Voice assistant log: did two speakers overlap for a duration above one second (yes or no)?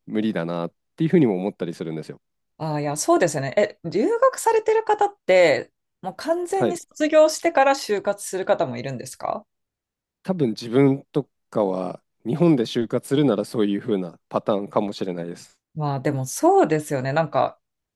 no